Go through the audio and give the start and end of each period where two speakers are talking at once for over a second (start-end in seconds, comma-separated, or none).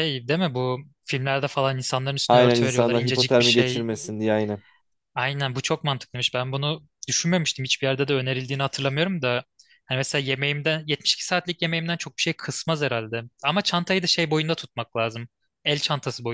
2.3-3.9